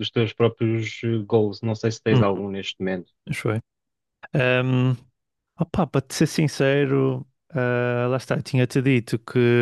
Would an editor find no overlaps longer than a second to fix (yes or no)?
yes